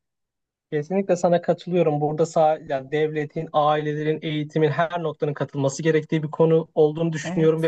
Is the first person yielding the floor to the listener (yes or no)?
no